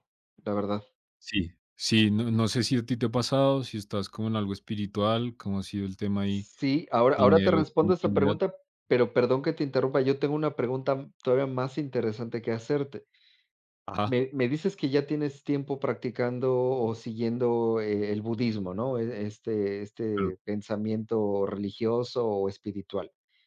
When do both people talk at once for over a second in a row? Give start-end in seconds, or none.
7.1-8.3